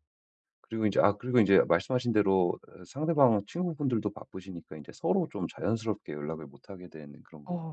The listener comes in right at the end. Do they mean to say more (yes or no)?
yes